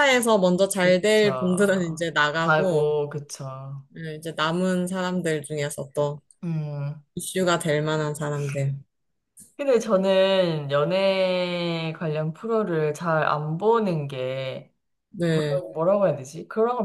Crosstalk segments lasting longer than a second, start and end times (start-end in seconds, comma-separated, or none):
0.8-2.9